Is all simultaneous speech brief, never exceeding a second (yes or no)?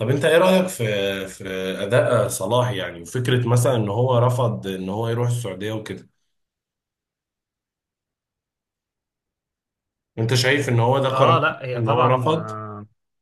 no